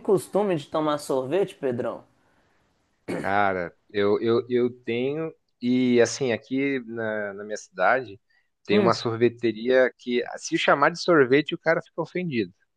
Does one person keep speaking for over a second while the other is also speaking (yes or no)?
no